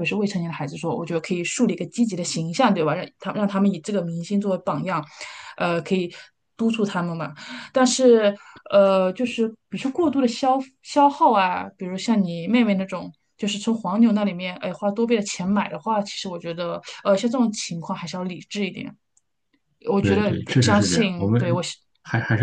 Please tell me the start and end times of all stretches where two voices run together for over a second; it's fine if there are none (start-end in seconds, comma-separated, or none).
20.0-21.6